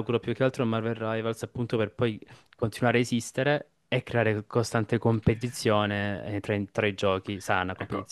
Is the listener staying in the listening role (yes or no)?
no